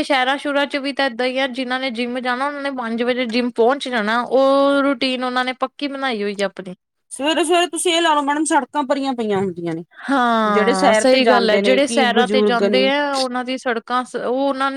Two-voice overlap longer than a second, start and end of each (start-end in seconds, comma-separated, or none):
10.5-12.9